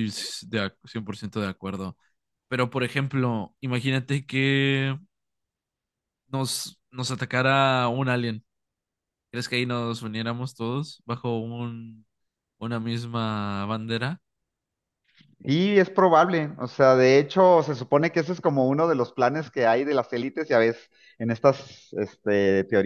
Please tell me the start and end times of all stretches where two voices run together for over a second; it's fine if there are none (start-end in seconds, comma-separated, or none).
none